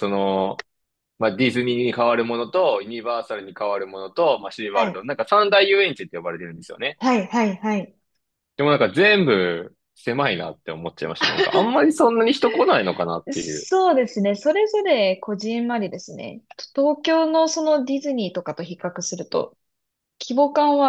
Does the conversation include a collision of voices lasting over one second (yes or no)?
no